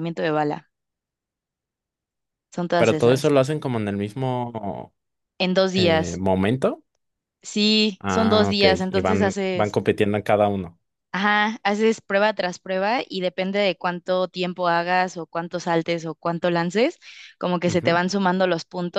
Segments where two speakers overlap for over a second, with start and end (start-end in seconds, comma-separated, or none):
8.0-9.8